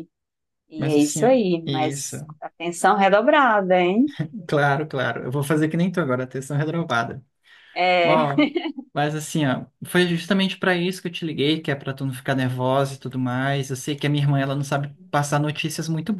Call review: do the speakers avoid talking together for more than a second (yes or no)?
no